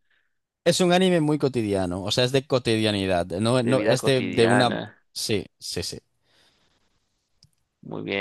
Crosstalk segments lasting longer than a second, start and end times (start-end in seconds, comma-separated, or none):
3.6-5.0